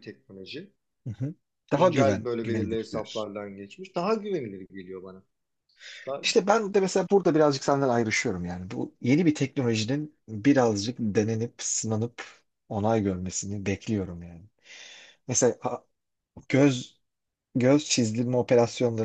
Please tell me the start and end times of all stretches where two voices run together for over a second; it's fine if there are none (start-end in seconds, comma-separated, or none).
1.8-3.3